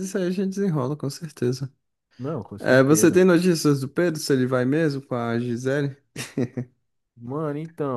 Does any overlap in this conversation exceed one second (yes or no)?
no